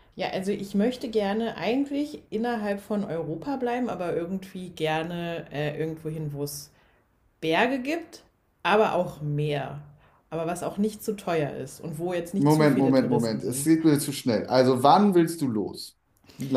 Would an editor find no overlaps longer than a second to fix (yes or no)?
no